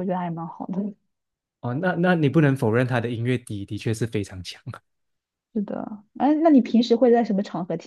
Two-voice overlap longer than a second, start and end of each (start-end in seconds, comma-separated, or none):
none